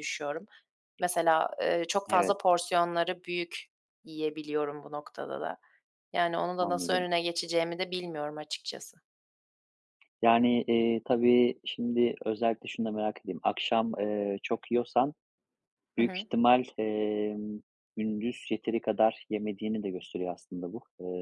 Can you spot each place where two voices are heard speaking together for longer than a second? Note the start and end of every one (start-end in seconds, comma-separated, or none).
none